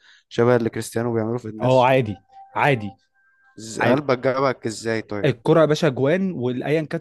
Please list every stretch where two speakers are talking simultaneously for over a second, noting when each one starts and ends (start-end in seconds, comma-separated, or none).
none